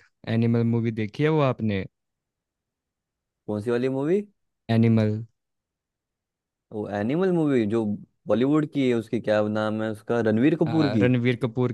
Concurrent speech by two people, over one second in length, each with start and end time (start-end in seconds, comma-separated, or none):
none